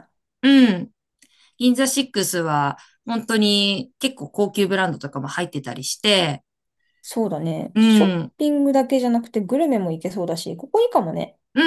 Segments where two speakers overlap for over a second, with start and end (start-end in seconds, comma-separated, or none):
none